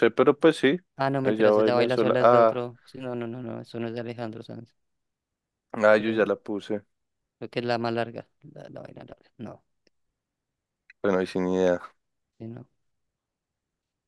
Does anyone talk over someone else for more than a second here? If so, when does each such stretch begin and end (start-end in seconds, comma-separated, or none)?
1.2-2.7